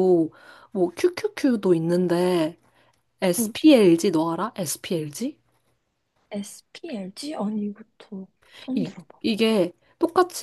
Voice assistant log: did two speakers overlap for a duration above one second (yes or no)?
no